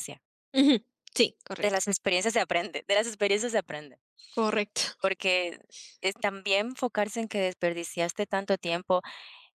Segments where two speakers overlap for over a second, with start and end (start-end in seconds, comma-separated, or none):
none